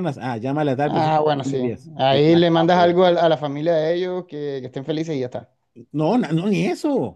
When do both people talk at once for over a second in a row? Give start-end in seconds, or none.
0.9-2.9